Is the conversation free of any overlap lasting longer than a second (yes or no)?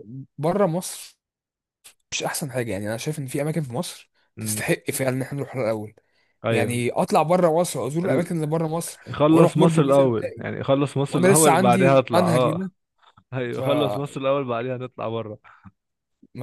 no